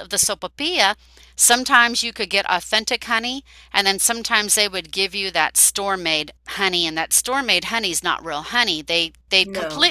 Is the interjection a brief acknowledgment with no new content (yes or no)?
yes